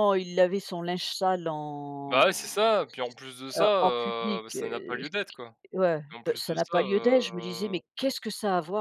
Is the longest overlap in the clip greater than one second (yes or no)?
yes